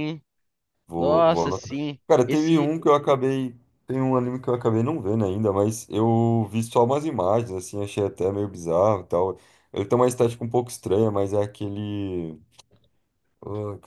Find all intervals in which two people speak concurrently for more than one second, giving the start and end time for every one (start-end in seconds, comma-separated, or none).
1.0-2.7